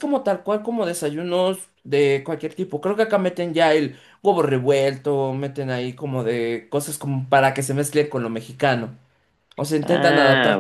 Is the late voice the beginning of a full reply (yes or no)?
yes